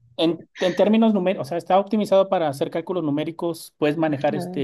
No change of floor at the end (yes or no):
yes